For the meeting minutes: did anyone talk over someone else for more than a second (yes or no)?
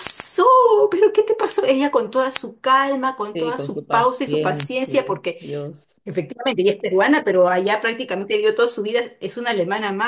yes